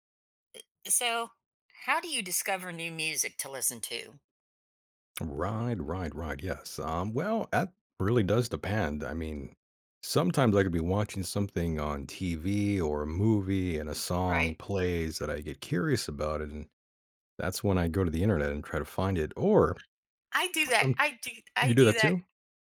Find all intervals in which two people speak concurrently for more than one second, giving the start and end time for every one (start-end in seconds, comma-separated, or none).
none